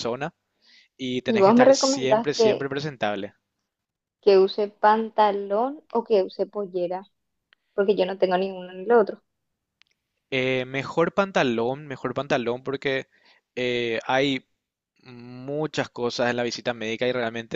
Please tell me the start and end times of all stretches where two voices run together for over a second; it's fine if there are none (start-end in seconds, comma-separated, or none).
1.2-2.7